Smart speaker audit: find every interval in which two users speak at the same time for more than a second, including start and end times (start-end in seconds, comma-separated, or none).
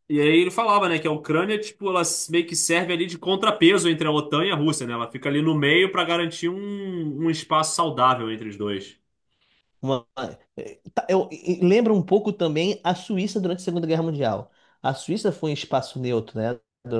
none